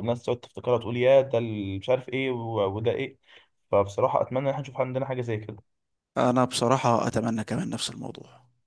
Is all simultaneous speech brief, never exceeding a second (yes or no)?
yes